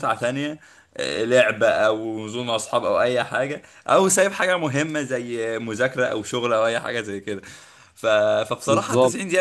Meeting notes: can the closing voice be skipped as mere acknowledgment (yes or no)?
yes